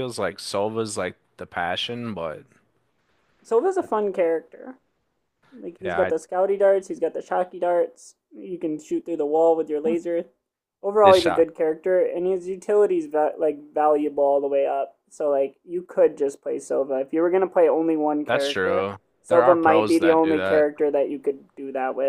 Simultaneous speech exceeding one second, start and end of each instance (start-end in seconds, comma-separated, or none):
18.3-20.7